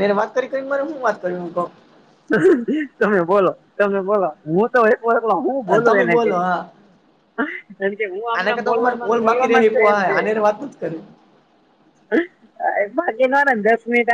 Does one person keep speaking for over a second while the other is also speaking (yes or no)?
yes